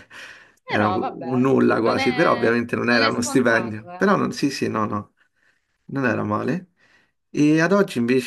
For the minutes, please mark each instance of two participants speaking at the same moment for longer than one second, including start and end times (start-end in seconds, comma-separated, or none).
0.7-4.1